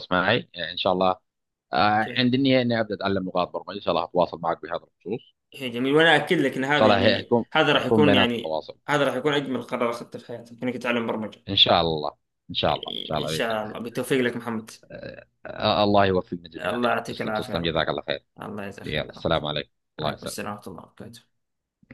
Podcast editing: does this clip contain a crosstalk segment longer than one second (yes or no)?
yes